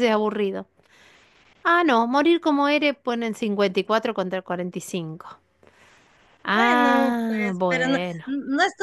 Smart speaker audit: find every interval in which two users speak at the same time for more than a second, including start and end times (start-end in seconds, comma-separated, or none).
6.5-8.2